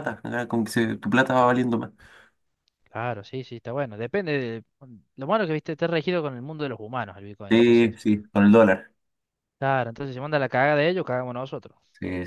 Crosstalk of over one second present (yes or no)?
no